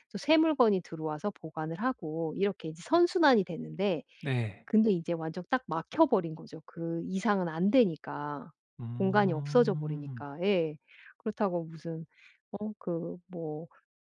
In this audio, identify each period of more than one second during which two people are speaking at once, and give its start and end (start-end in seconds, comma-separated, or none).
8.9-10.2